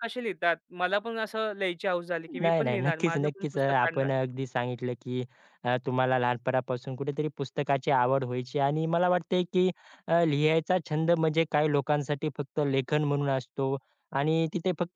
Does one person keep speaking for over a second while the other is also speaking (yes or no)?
yes